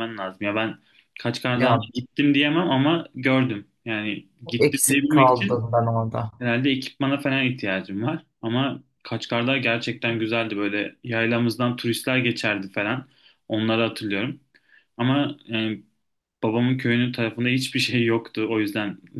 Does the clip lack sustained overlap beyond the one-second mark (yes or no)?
no